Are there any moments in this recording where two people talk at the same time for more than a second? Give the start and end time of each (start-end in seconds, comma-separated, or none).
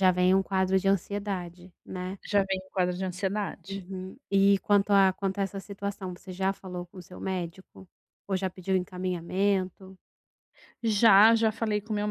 none